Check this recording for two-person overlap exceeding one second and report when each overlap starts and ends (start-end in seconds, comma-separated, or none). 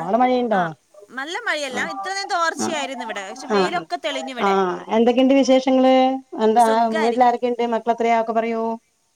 1.7-3.8